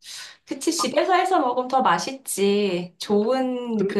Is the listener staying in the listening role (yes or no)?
yes